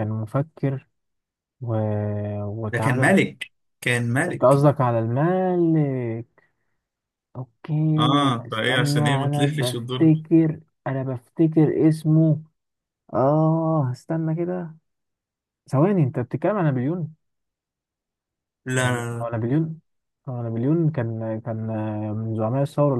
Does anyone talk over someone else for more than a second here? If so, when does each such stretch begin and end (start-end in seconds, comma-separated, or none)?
8.5-10.2